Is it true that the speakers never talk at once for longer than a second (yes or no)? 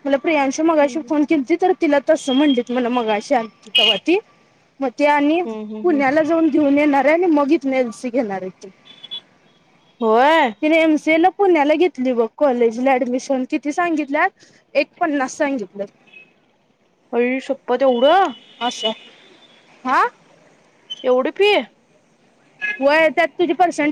yes